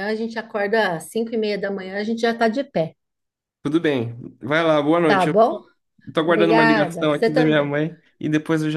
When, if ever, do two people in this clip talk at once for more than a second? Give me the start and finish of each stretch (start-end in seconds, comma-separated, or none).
6.3-7.7